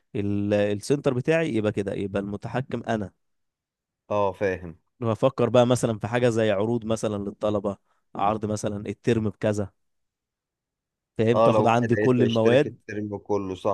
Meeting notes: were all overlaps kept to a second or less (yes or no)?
no